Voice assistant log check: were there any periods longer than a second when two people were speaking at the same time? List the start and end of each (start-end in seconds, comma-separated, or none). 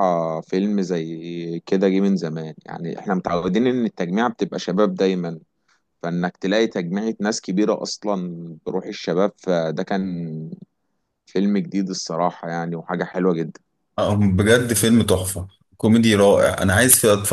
none